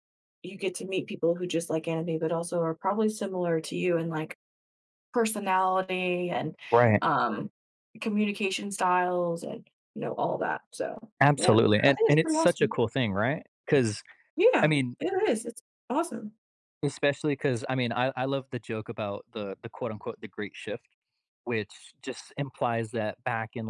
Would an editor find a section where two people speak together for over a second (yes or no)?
yes